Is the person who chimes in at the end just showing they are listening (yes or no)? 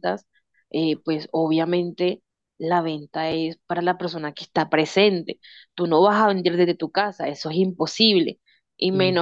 yes